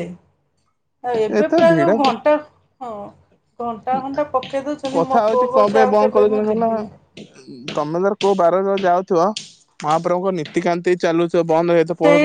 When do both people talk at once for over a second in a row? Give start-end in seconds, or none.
5.0-6.9